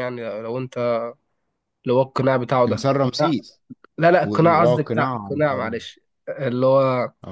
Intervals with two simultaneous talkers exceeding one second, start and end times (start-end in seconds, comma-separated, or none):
4.2-5.8